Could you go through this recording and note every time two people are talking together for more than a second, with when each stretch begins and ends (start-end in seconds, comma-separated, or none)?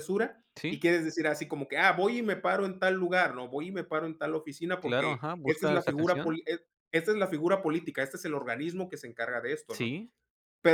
4.8-6.4